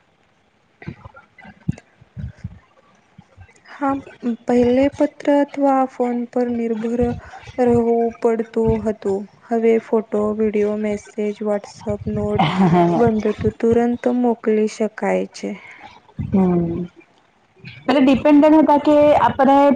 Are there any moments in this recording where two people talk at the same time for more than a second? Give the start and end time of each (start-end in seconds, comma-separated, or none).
none